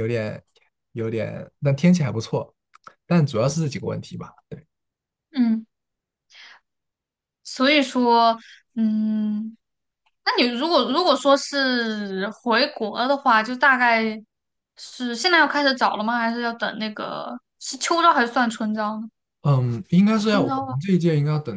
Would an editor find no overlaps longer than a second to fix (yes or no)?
yes